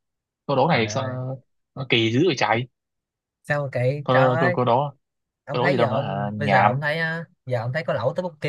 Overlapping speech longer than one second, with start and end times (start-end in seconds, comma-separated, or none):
5.5-6.8